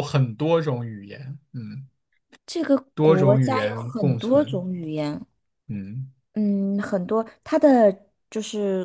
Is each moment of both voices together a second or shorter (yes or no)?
no